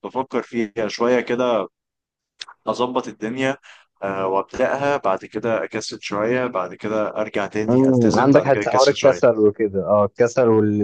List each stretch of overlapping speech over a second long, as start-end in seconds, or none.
7.7-9.2